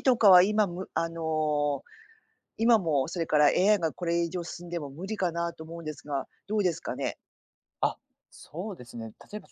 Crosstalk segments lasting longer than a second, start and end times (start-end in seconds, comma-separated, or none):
none